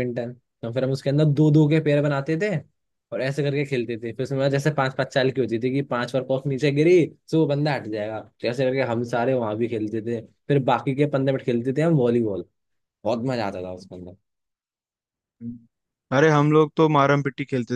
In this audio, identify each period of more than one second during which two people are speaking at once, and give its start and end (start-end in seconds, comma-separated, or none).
none